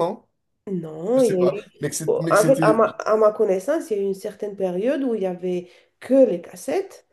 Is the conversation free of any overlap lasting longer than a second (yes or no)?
no